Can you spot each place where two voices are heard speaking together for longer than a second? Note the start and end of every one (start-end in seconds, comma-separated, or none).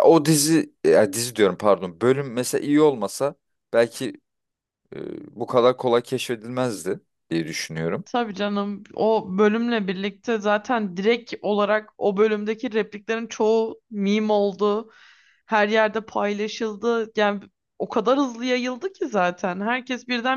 none